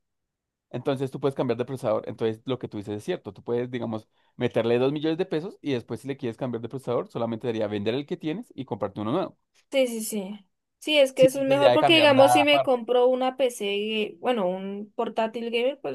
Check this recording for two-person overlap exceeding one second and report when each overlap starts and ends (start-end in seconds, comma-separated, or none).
11.2-12.8